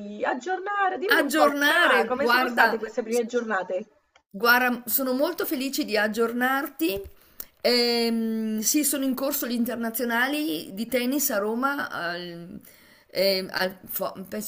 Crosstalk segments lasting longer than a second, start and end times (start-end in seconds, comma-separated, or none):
1.1-2.8